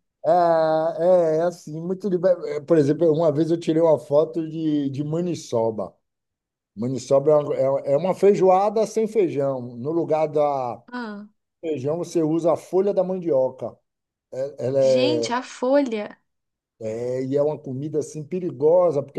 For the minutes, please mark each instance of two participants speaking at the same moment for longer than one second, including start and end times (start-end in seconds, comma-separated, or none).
none